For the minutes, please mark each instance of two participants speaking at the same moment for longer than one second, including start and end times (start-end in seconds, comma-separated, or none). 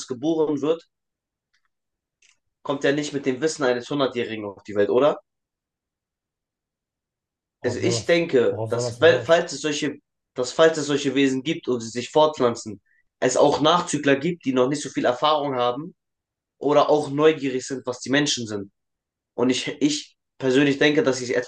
7.6-9.4